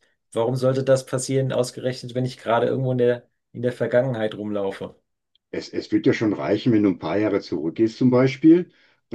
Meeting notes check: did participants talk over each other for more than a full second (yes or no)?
no